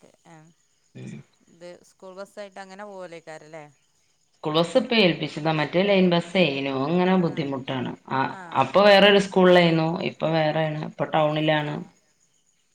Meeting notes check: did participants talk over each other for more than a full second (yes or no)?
no